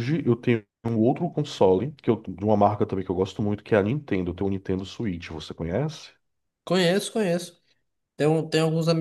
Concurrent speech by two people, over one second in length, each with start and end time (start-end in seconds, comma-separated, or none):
none